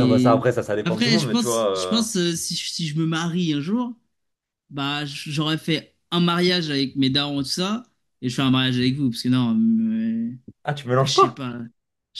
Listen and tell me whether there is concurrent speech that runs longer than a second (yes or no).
yes